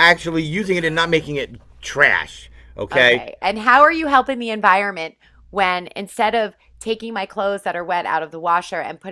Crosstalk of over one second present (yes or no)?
no